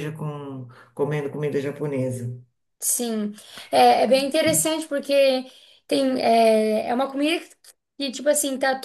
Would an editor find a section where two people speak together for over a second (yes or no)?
no